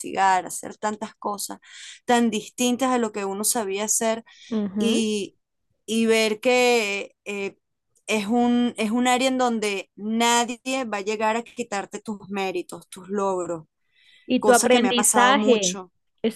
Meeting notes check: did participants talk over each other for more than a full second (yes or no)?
yes